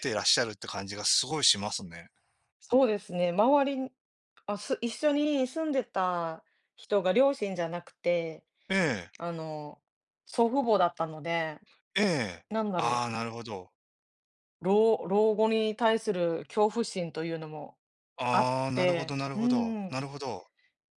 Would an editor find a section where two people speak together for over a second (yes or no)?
yes